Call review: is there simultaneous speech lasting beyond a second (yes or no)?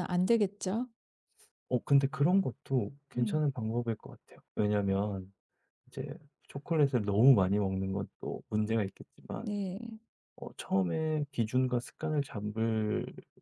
no